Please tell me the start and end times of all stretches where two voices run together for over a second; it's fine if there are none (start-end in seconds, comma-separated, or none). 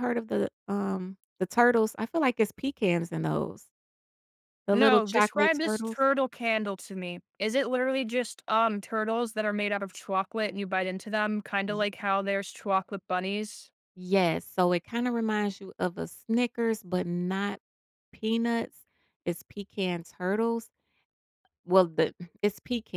4.7-6.0